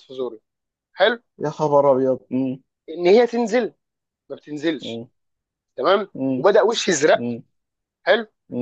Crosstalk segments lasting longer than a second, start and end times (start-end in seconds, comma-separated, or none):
none